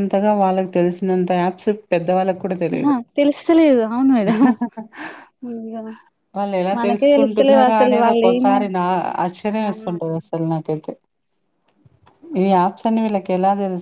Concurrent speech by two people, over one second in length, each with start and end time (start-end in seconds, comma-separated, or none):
6.8-8.6